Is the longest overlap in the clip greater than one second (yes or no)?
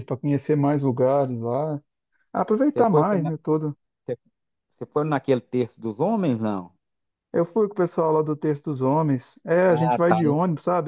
no